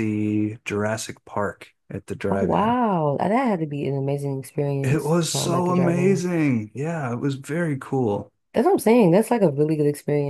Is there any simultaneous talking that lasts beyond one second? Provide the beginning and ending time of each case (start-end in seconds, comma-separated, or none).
4.8-6.2